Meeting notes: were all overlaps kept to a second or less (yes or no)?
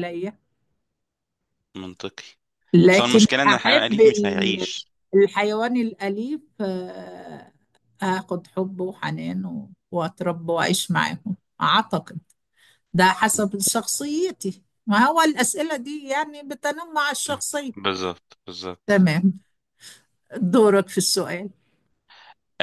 no